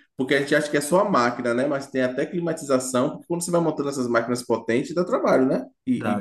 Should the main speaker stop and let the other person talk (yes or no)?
yes